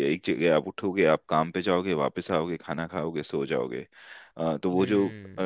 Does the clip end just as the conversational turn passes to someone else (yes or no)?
no